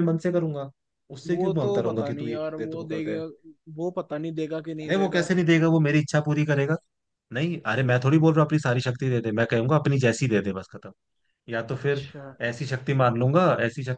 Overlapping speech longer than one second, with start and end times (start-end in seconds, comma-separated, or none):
1.3-3.2